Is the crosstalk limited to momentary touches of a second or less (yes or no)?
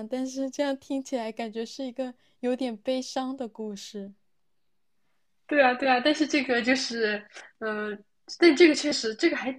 yes